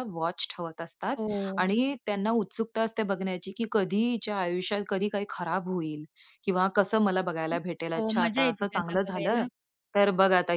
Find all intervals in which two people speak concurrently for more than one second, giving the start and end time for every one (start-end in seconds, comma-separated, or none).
8.0-9.4